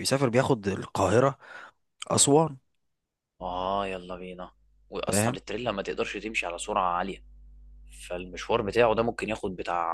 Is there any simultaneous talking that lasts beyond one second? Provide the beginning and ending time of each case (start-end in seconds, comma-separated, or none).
none